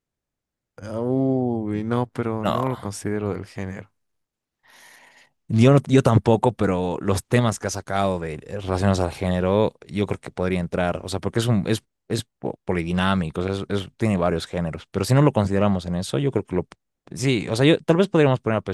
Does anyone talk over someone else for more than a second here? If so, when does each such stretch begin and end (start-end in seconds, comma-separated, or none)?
none